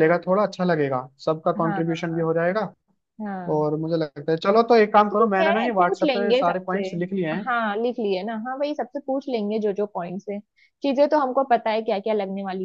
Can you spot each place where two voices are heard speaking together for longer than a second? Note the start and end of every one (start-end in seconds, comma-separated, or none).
5.1-6.9